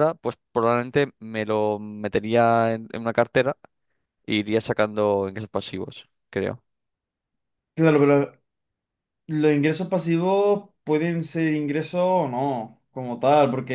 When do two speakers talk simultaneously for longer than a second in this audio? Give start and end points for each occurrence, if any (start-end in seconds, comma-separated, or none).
none